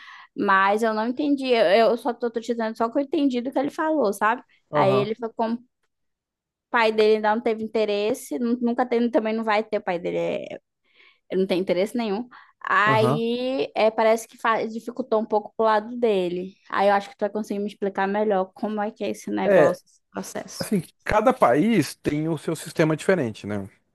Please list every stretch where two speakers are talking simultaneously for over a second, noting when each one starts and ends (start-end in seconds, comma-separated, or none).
none